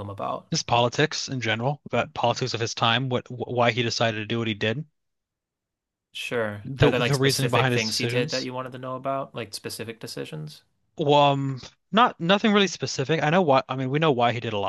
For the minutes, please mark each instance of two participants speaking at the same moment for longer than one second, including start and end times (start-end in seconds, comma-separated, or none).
6.6-8.5